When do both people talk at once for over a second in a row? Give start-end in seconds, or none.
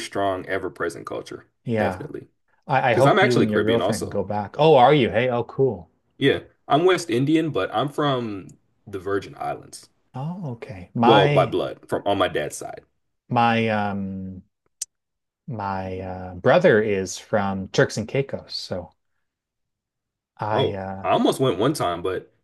2.9-4.2